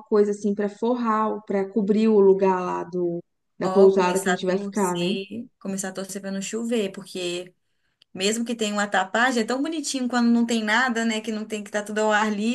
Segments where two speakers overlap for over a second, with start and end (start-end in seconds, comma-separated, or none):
3.6-5.1